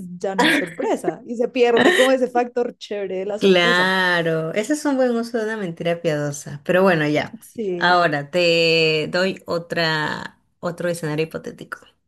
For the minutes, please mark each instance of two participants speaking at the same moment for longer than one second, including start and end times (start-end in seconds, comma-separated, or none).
none